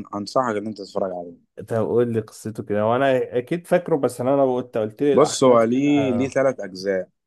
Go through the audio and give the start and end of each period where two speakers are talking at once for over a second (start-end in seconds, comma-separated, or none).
5.1-6.4